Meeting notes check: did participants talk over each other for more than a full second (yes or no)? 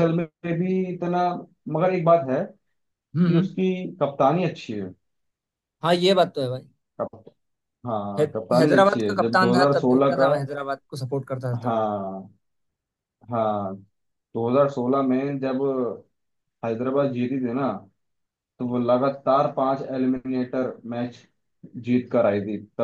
yes